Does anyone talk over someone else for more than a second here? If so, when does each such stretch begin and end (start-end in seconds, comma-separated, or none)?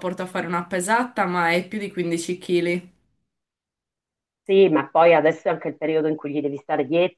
none